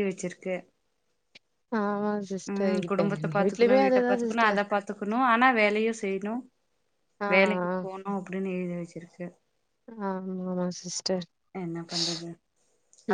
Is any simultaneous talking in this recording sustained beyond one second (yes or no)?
yes